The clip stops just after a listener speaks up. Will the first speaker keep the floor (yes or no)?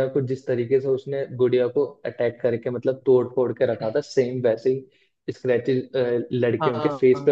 no